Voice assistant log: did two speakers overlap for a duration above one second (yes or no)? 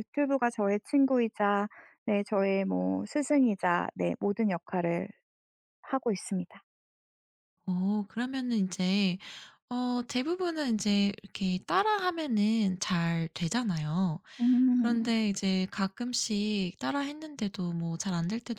no